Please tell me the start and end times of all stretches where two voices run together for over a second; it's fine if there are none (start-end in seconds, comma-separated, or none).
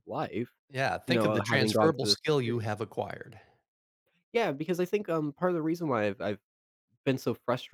1.1-2.6